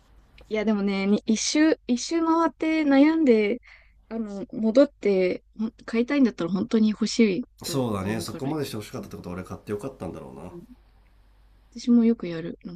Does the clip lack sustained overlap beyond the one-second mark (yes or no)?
no